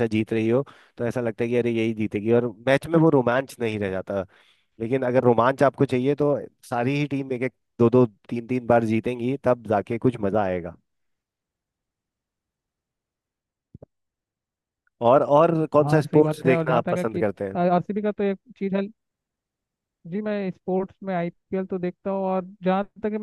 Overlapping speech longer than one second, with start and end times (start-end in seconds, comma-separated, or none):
15.8-17.6